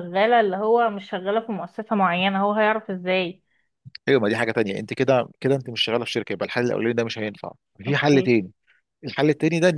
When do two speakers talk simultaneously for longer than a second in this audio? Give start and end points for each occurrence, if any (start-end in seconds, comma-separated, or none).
none